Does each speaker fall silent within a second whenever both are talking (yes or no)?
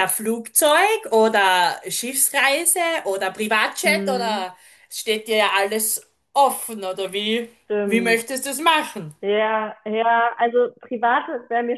yes